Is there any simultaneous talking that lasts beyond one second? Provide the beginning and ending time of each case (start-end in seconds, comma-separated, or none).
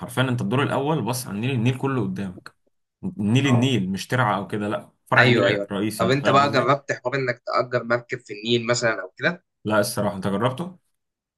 5.2-6.7